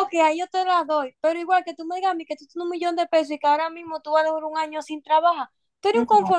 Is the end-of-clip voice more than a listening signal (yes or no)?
no